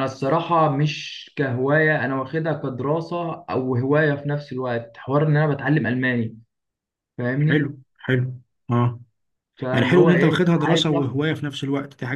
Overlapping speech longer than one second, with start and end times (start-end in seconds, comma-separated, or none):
9.7-11.2